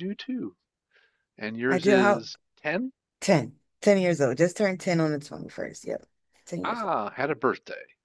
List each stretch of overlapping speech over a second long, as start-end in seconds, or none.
none